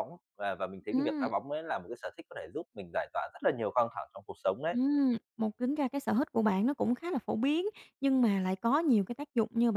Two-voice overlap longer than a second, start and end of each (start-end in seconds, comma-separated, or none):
none